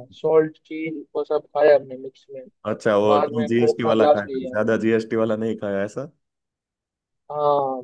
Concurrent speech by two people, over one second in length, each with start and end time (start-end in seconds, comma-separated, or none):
3.1-4.5